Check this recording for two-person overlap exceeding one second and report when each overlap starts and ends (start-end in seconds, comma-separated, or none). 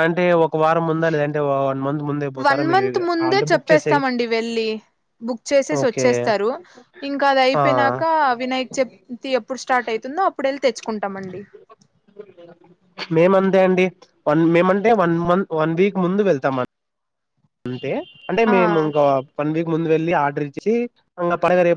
none